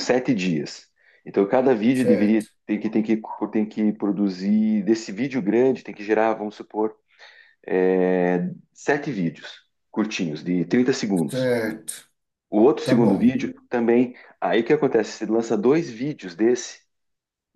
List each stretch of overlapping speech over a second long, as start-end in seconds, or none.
none